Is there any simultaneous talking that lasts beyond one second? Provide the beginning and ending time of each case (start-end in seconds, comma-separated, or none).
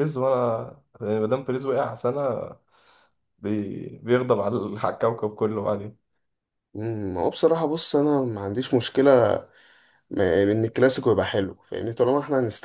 none